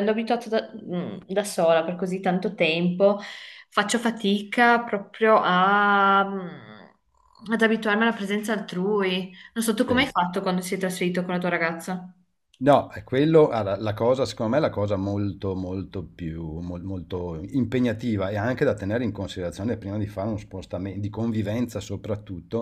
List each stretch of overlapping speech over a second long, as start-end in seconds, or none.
none